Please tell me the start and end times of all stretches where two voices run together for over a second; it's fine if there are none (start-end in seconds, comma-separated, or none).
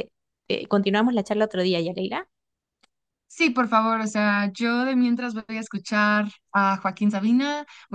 none